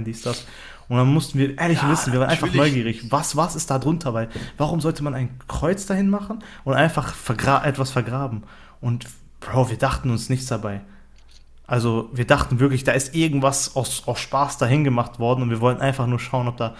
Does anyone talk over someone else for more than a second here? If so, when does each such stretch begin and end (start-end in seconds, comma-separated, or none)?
1.6-3.2